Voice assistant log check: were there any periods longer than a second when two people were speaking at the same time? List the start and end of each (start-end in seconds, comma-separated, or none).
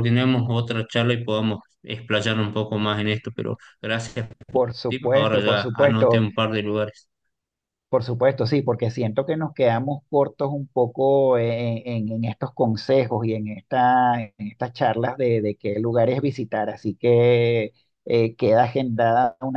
4.5-6.3